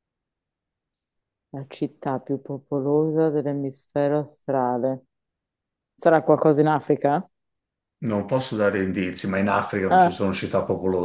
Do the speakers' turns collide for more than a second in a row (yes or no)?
no